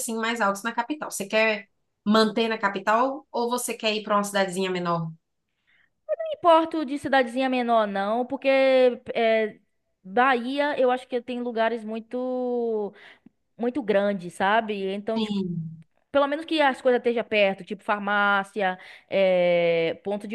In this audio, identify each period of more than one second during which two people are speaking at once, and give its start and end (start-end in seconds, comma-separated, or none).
none